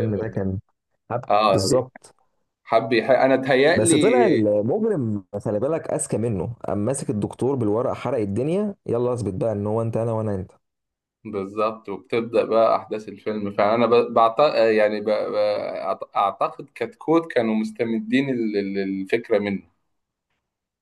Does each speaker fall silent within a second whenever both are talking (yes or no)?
yes